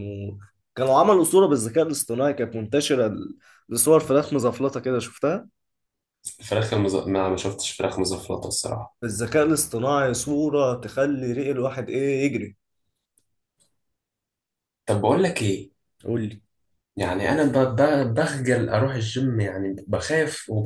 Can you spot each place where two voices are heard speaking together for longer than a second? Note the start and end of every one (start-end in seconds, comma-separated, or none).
none